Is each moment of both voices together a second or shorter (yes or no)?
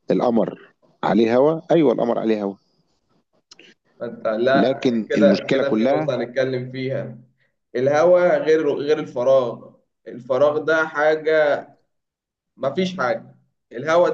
no